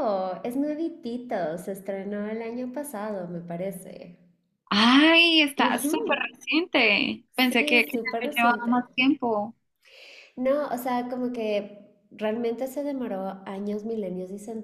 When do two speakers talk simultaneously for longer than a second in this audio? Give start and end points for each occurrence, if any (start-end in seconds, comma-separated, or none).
7.4-8.8